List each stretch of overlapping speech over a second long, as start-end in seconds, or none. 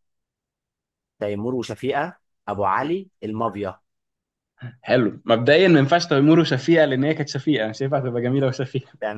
none